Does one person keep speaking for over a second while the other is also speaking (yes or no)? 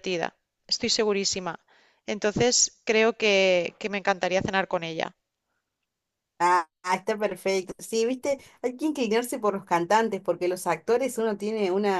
no